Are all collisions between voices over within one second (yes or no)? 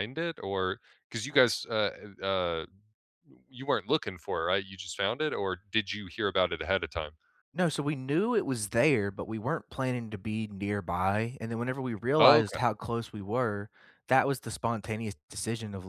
yes